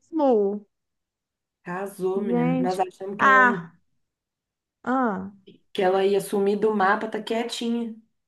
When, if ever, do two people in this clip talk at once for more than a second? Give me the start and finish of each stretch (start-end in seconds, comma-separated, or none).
2.1-3.6